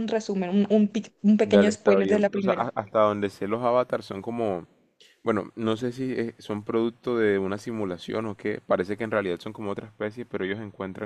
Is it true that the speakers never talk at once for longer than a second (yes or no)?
no